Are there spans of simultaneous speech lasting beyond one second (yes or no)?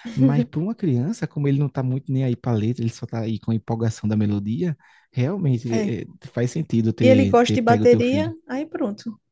yes